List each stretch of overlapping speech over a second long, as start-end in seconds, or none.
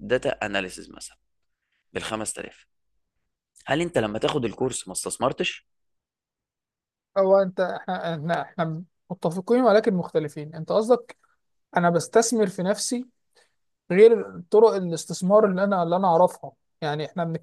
none